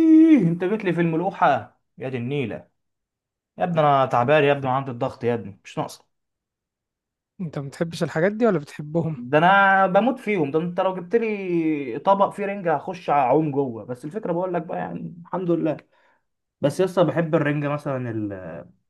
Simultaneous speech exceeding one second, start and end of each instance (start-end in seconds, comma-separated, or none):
none